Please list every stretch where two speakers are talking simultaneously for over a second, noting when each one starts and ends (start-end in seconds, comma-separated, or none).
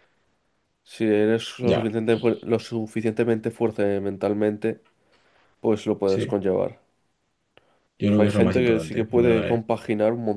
8.2-9.6